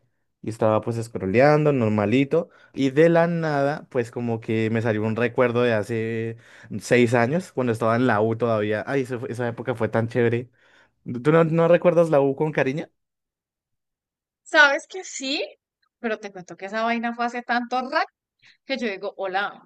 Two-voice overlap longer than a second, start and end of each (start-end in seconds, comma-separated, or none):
none